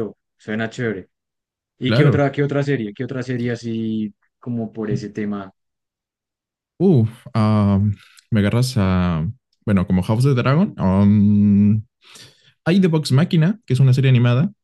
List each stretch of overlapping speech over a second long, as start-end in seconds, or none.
none